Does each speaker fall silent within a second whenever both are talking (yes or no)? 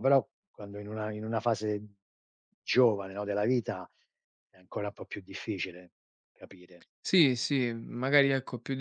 yes